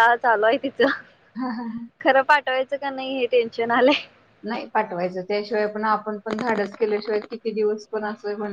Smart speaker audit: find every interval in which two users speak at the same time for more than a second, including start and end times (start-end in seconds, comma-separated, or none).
none